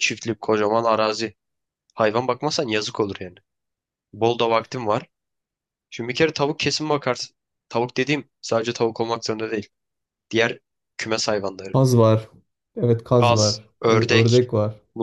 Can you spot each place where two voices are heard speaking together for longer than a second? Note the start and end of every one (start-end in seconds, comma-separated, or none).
13.2-14.5